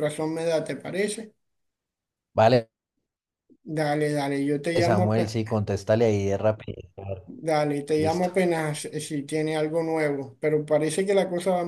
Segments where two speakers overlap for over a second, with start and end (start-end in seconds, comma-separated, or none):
none